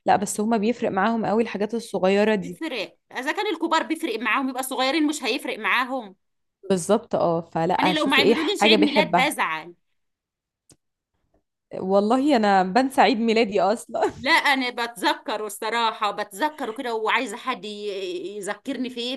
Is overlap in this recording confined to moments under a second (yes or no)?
no